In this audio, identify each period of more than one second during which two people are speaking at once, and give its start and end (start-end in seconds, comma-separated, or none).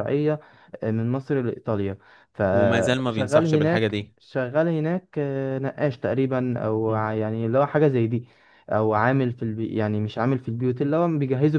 2.5-4.1